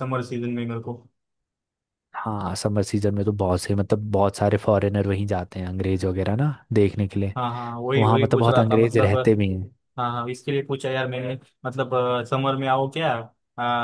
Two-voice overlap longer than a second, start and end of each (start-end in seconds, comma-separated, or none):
8.0-9.3